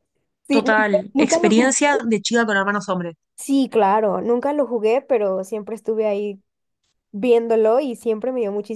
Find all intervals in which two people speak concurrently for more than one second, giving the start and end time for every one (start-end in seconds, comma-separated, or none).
0.5-2.0